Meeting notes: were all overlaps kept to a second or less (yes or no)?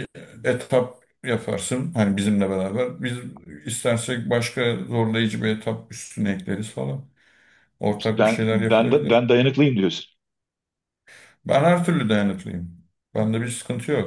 no